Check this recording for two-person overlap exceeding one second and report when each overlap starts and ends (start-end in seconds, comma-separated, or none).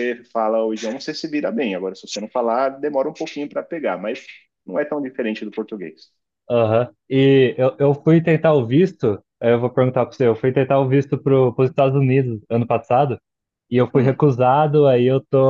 none